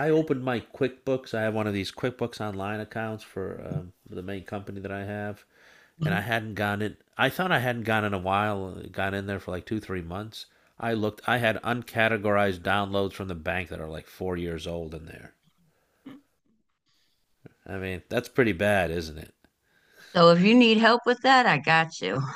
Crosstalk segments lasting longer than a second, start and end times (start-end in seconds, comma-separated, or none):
none